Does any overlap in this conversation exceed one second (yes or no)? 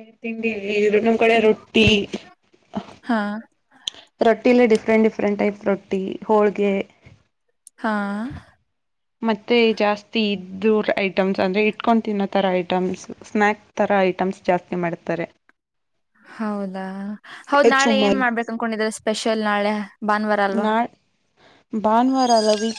no